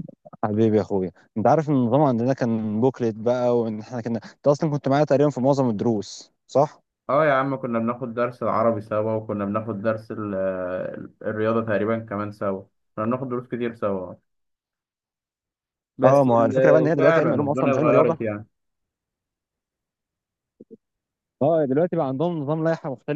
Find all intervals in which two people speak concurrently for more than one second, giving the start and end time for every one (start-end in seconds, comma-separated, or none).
16.0-18.2